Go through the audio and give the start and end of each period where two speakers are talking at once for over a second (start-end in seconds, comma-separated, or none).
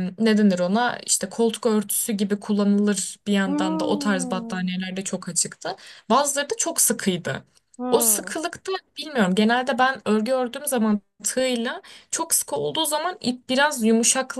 3.5-4.7